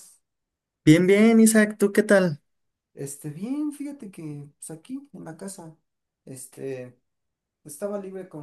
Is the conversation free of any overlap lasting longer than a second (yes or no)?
yes